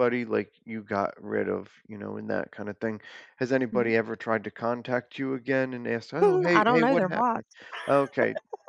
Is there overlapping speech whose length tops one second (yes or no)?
yes